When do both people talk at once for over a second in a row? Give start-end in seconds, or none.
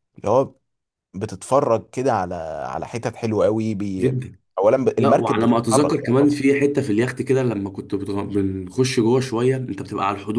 5.0-6.4